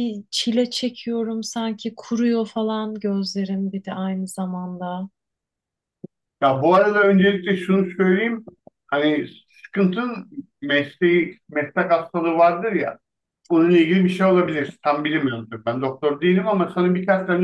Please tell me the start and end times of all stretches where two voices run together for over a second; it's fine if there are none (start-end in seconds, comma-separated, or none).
none